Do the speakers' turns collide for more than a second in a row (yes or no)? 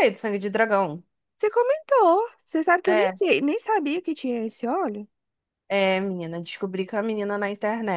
no